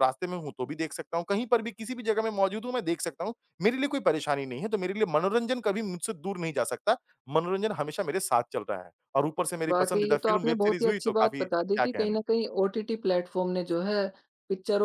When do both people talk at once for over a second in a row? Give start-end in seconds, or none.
9.7-12.3